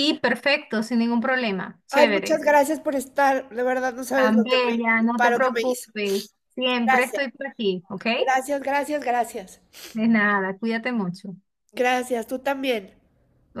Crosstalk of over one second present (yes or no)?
yes